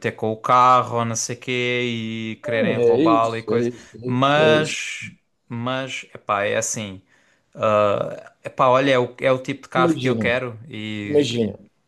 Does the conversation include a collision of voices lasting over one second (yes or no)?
yes